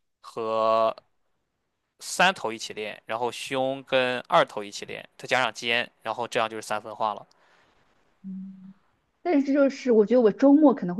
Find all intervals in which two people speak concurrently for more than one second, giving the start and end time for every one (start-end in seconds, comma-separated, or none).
none